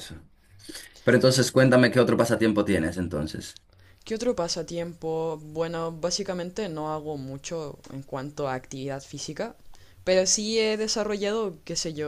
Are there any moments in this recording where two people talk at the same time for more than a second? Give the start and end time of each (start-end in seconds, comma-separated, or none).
none